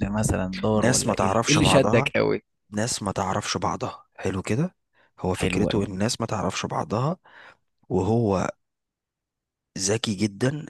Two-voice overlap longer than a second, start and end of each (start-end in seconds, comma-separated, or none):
0.7-2.1